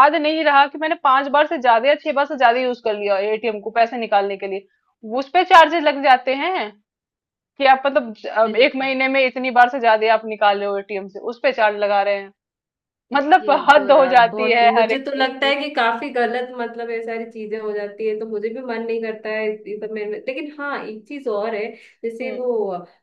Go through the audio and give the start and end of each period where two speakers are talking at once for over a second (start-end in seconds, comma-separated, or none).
13.4-15.5